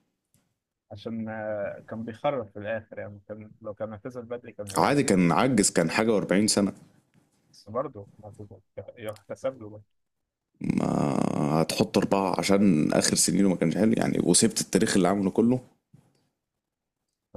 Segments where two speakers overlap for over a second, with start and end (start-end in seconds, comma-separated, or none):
none